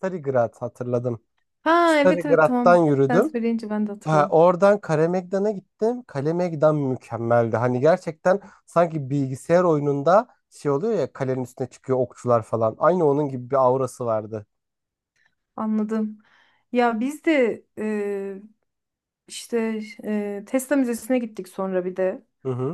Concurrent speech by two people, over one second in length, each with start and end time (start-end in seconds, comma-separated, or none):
1.9-3.4